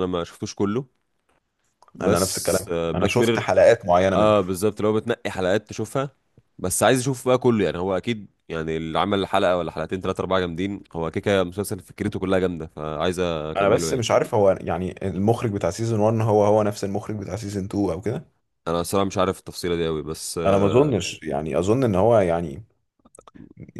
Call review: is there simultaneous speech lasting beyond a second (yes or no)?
yes